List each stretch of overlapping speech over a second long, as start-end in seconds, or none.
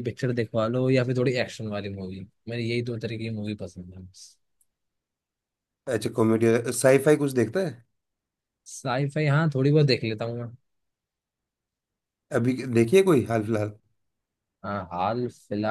none